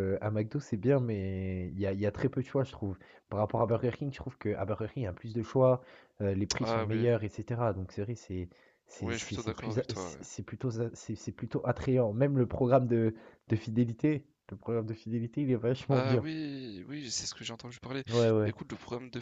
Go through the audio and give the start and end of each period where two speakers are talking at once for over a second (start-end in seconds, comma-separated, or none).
9.0-10.2